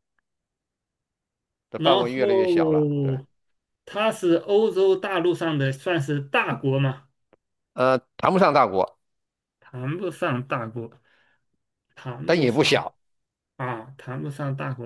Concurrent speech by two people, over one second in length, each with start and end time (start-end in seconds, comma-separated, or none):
1.8-3.1